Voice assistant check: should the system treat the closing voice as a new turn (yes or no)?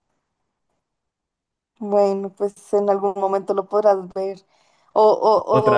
no